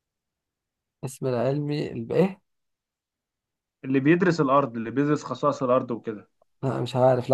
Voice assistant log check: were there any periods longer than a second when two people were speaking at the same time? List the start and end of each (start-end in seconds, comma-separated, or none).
none